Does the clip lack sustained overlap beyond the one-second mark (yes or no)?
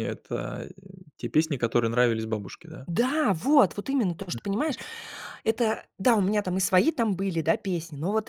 yes